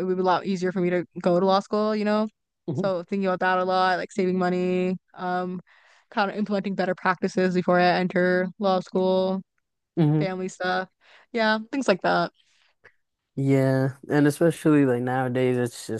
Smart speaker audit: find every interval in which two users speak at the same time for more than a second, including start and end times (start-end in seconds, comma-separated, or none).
none